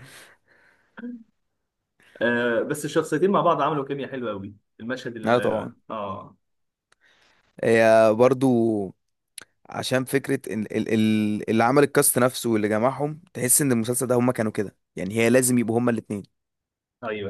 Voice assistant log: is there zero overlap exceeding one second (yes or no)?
yes